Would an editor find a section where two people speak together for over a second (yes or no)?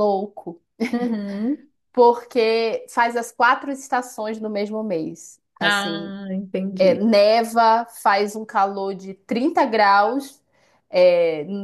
no